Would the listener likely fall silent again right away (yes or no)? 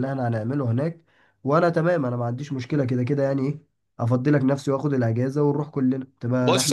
no